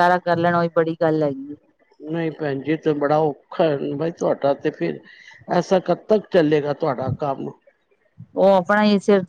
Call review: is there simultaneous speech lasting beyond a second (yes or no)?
no